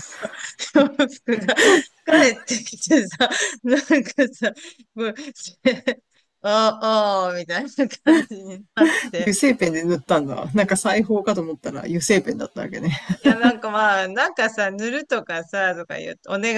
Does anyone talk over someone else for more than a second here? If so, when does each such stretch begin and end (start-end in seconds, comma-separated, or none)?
none